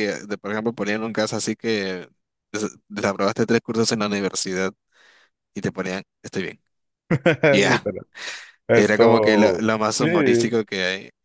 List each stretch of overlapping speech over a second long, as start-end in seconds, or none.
8.7-10.1